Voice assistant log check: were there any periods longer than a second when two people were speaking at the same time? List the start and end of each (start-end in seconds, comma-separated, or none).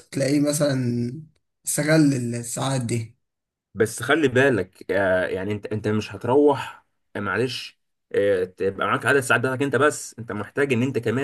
none